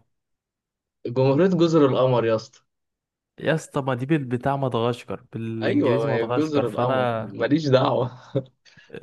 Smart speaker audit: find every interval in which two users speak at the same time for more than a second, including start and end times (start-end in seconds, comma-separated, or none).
5.6-7.3